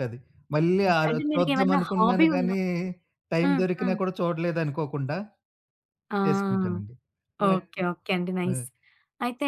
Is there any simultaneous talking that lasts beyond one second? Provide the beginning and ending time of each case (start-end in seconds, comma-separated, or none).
0.9-2.6